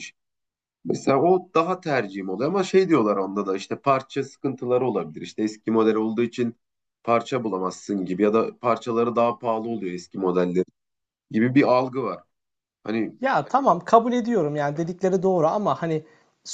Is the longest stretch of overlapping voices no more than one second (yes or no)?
yes